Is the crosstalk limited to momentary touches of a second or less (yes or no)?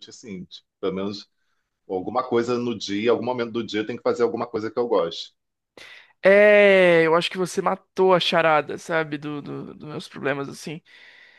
yes